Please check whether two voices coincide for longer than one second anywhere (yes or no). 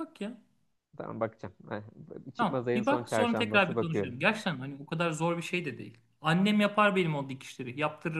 yes